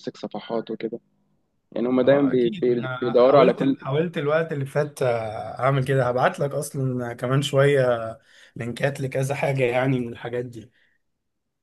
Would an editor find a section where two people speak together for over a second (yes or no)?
yes